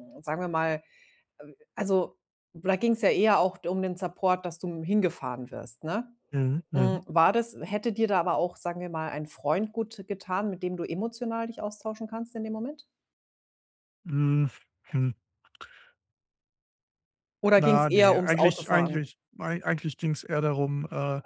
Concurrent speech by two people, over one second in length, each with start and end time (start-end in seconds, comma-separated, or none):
17.6-19.1